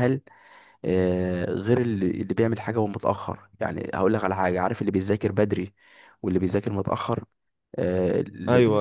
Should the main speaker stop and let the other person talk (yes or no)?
no